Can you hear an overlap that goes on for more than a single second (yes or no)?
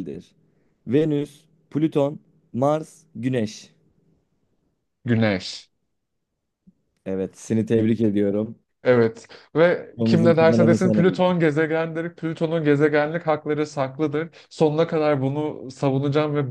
yes